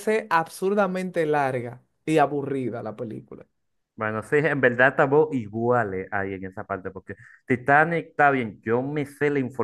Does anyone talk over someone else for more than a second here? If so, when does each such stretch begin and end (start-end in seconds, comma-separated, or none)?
none